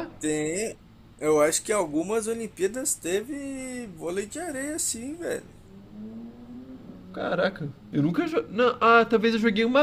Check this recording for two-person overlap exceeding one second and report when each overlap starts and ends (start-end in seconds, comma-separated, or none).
none